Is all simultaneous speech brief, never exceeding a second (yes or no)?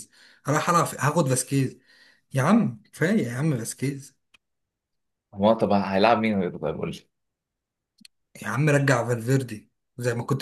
yes